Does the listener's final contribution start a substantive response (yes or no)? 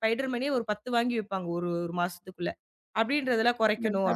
no